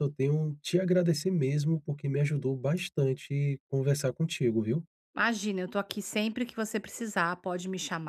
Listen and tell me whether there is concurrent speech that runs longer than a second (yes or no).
no